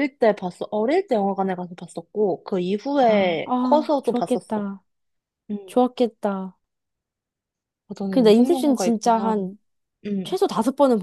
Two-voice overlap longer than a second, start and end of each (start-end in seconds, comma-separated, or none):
3.1-4.6, 8.1-9.4